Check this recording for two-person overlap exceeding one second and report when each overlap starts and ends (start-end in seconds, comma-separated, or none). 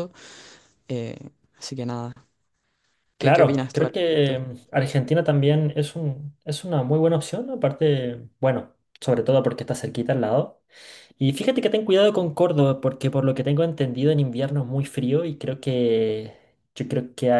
3.2-4.4